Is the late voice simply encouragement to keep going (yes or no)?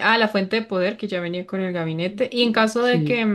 yes